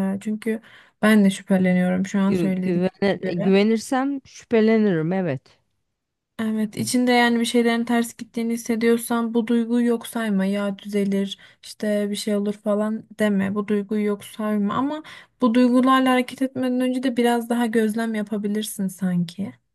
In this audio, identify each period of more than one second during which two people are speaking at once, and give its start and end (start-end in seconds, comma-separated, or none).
2.3-3.5